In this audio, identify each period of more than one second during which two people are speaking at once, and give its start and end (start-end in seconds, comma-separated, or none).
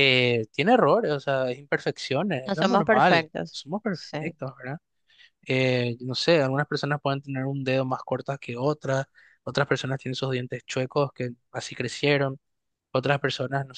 2.5-4.2